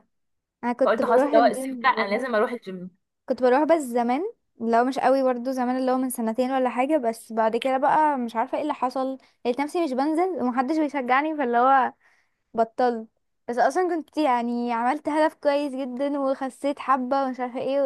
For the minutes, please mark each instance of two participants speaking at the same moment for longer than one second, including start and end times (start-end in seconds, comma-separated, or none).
0.8-2.2